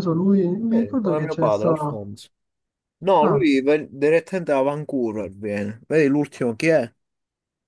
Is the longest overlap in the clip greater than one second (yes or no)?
yes